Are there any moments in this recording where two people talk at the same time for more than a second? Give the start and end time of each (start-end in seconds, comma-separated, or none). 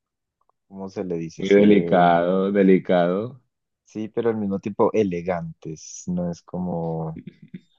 none